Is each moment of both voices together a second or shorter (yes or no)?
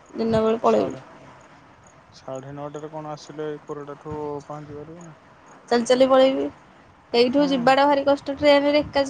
yes